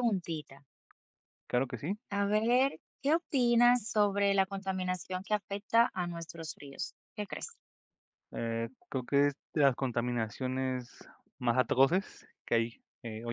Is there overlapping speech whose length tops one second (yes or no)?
no